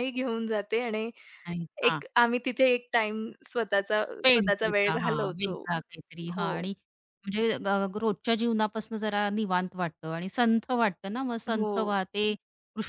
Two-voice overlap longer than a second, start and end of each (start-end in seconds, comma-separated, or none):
4.2-5.6